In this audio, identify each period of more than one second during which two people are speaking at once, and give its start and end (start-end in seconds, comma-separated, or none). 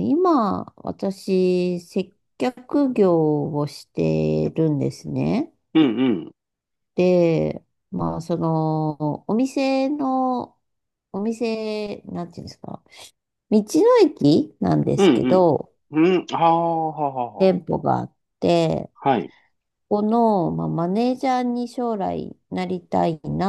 none